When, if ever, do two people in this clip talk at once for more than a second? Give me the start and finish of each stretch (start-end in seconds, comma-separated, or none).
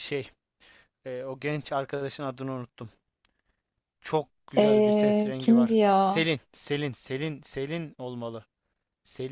4.6-6.3